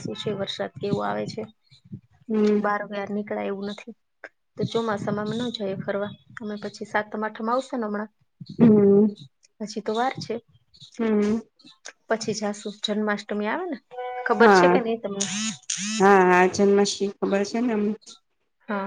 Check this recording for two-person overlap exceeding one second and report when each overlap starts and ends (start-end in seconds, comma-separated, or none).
none